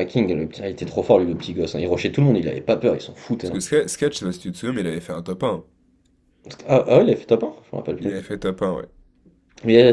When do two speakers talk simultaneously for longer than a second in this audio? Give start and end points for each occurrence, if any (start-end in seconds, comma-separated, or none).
none